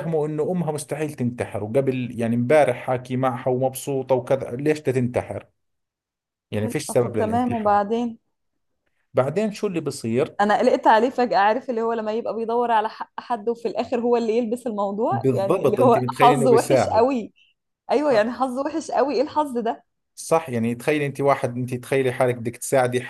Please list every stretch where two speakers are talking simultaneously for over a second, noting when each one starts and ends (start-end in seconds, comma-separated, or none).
6.6-7.8, 15.1-17.1